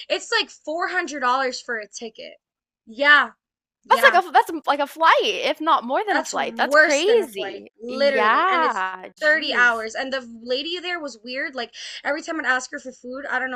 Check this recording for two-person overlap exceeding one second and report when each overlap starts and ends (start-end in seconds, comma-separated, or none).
6.1-9.7